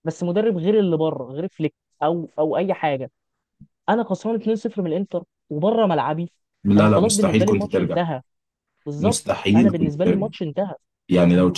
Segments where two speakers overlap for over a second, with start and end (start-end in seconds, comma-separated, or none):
6.8-8.0, 9.0-10.3